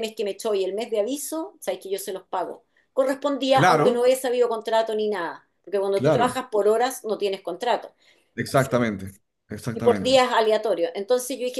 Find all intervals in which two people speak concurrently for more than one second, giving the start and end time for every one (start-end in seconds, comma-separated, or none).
none